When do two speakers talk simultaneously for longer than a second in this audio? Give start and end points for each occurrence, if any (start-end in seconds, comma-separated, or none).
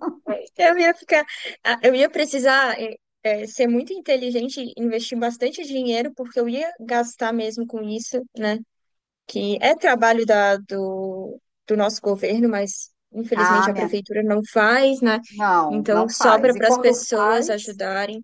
15.7-17.5